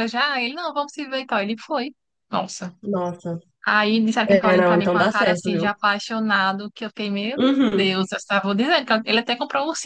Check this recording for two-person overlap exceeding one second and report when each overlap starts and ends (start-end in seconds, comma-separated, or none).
4.3-5.7